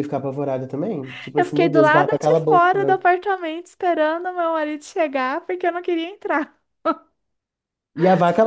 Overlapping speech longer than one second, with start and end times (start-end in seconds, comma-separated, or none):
1.4-3.0